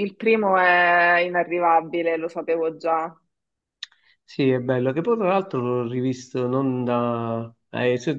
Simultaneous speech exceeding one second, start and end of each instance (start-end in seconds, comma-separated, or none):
none